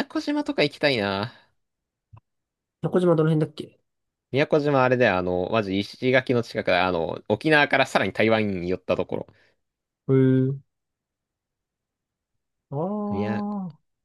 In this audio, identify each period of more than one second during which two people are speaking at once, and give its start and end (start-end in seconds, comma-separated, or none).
none